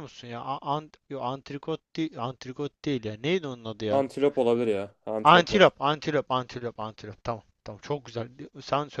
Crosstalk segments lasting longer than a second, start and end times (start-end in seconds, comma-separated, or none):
none